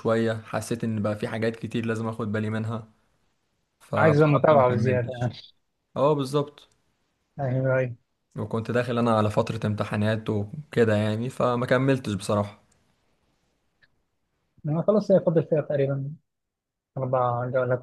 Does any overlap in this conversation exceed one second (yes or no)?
yes